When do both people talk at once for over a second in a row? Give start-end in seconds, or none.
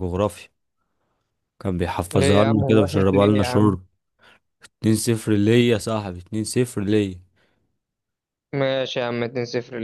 2.1-3.7